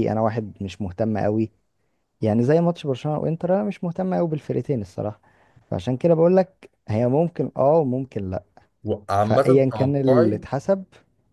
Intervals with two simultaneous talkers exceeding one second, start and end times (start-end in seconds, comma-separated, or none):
9.2-10.4